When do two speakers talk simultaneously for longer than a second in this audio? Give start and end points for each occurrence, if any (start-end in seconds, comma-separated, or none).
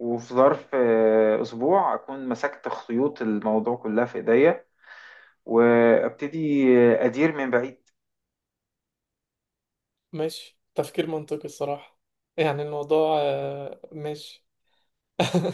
none